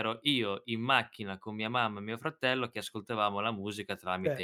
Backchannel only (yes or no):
no